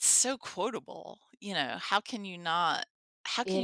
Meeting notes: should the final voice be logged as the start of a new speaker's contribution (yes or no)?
no